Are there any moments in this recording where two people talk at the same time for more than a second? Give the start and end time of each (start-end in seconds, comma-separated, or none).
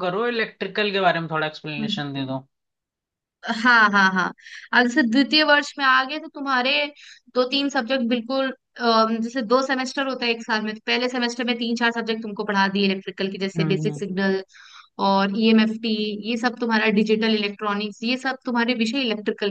none